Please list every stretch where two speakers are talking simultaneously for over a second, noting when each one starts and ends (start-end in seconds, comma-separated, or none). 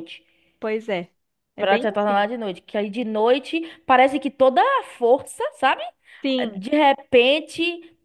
none